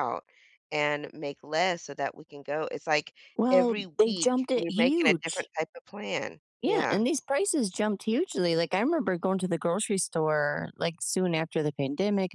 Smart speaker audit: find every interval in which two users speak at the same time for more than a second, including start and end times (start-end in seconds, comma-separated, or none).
3.5-5.5